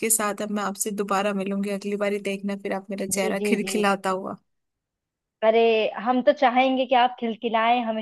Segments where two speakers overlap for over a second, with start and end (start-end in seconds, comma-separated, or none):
none